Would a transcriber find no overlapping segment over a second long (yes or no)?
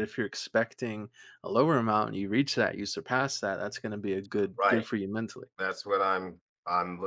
yes